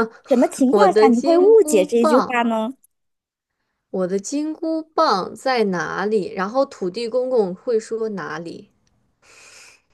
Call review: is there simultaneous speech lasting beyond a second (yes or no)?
yes